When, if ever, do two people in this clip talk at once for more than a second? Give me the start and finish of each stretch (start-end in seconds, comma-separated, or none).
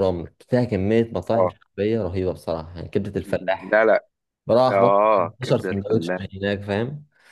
4.7-6.2